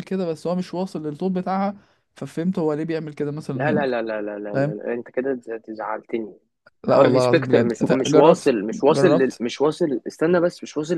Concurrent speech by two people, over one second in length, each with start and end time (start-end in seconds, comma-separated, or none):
6.9-9.4